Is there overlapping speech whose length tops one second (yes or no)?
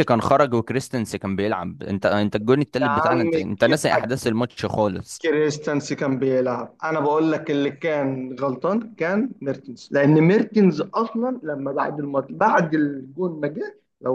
yes